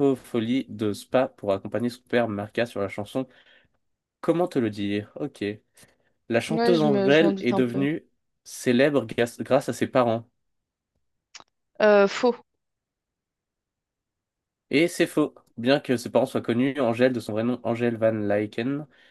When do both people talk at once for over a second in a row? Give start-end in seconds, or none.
6.5-7.9